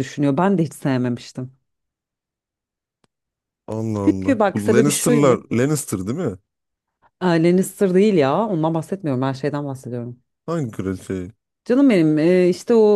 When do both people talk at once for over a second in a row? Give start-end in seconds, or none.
4.0-5.4